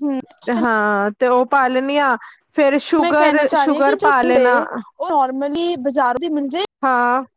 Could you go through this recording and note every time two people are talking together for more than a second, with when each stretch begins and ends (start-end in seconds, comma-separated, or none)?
3.0-4.6